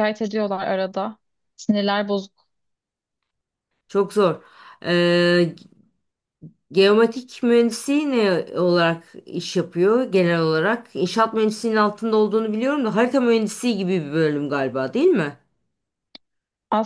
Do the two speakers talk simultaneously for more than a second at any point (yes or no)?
no